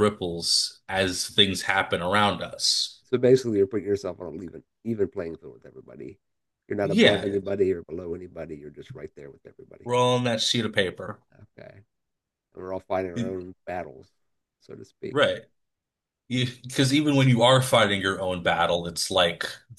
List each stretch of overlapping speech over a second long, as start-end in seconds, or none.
none